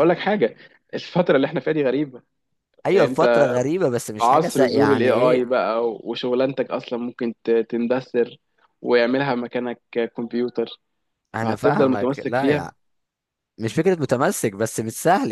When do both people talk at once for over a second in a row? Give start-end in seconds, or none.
4.2-5.5, 11.4-12.7